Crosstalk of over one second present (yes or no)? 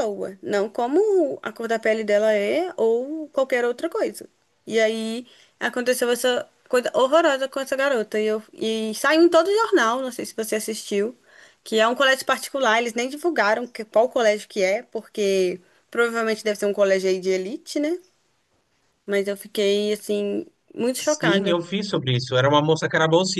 no